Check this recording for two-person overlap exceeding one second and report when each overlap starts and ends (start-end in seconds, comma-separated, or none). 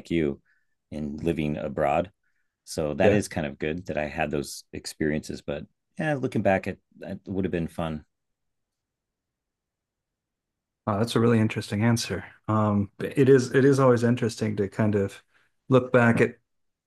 none